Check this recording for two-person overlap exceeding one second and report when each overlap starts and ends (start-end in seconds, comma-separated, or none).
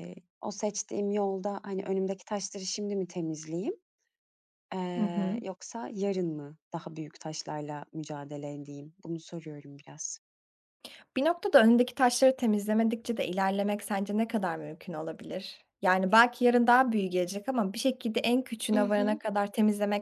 none